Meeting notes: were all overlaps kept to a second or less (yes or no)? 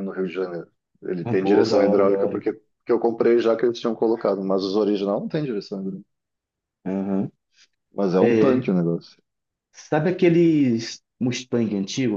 no